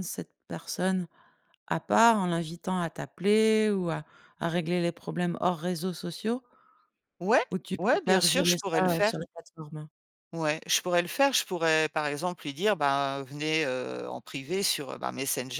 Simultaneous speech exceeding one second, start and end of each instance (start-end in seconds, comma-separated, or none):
7.8-9.2